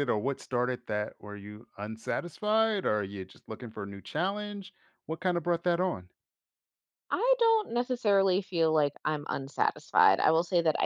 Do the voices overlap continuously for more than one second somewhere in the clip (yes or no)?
no